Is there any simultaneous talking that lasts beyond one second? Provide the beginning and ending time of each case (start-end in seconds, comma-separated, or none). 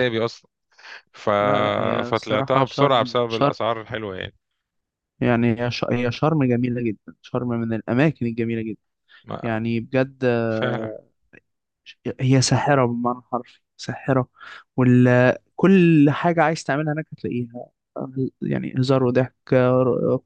2.0-3.5